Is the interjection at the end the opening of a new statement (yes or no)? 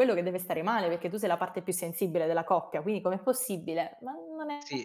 yes